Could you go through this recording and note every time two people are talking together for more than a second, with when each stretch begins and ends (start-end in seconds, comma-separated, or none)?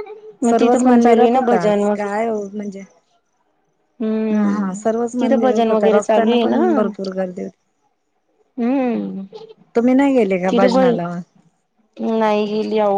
0.5-2.1, 4.3-6.6